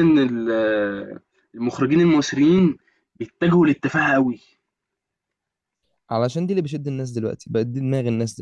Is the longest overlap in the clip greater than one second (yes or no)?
no